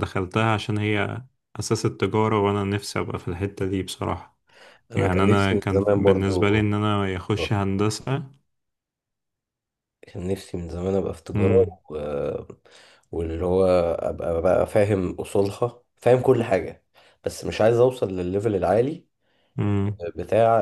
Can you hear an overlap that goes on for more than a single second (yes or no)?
yes